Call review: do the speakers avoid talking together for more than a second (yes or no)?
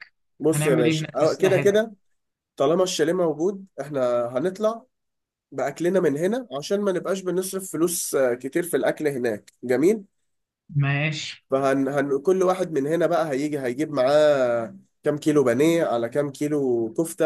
no